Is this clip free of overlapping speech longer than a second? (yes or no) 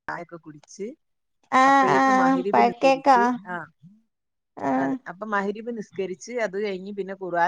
no